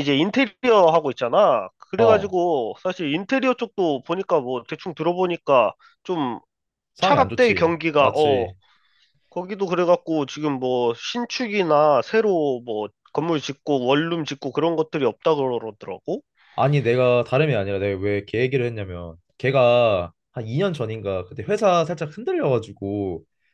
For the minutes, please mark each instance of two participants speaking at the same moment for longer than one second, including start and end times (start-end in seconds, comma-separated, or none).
7.0-8.5